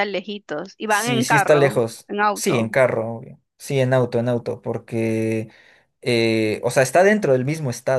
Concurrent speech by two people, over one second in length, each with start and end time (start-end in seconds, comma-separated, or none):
0.9-2.7